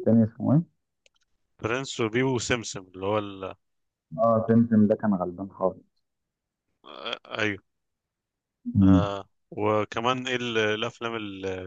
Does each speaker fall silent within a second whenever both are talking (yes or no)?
yes